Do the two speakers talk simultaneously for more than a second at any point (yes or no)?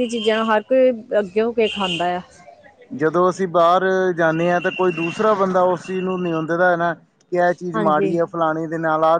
no